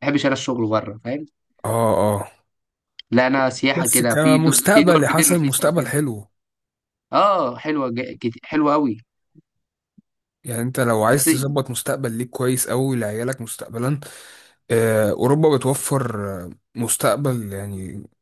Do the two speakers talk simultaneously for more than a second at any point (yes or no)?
yes